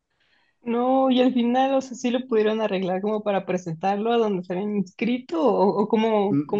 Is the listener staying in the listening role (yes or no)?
no